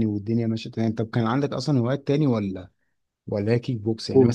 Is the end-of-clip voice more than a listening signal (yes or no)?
no